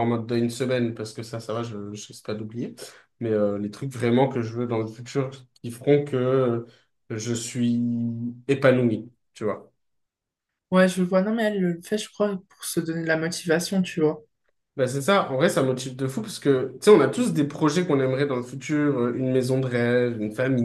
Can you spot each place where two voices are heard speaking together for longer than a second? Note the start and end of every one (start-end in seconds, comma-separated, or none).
none